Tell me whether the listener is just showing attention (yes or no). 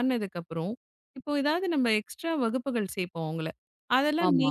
yes